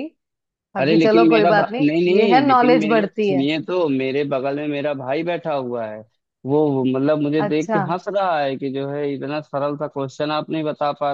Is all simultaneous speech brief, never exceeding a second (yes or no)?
no